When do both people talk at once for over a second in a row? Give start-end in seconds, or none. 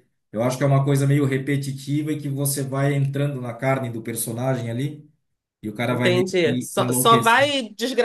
5.9-7.5